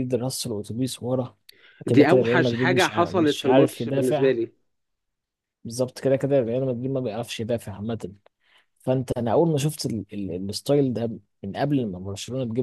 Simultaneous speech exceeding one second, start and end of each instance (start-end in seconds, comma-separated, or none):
1.9-4.3